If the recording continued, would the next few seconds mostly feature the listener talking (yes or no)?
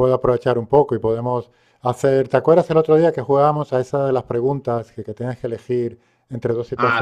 yes